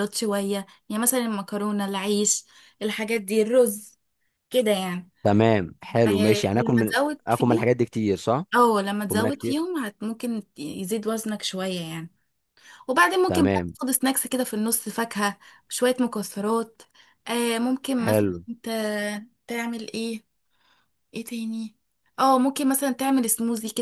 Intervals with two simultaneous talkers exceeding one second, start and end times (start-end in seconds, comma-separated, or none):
6.1-7.7